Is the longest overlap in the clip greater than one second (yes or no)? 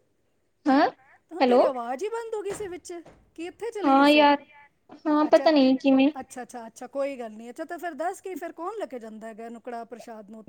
no